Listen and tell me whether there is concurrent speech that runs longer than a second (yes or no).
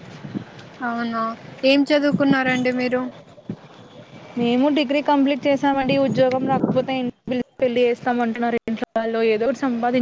no